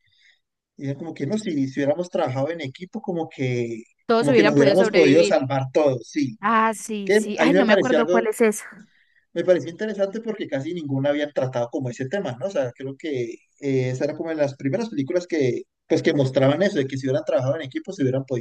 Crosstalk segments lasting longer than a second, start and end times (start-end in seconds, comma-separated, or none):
4.0-5.4, 7.0-8.2